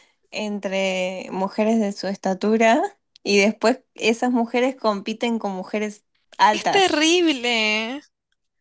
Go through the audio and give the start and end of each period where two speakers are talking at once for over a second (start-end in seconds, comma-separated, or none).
none